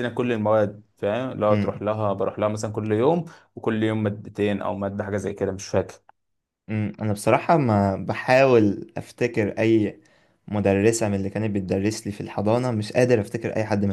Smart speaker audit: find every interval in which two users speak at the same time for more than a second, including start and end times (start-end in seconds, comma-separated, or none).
none